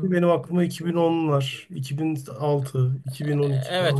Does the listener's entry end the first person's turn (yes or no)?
yes